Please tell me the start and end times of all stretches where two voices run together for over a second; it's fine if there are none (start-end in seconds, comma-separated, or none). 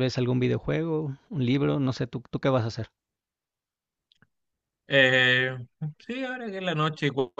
none